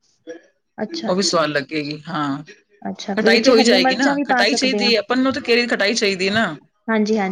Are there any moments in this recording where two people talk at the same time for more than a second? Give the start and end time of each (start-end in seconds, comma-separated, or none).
3.2-4.9